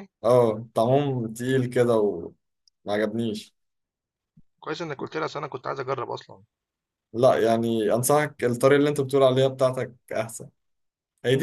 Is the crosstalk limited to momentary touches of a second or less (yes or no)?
yes